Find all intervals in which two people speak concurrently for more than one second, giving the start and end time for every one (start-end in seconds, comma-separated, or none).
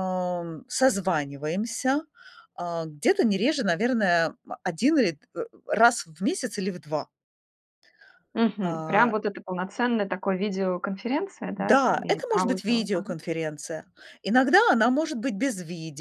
11.6-13.2